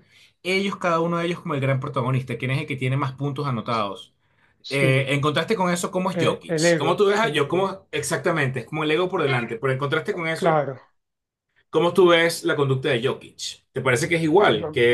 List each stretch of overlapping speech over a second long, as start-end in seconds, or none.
6.1-7.7